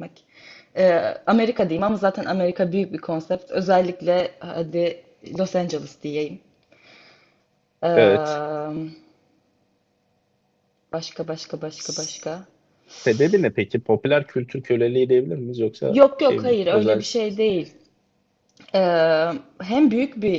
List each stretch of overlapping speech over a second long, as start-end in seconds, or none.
15.9-17.4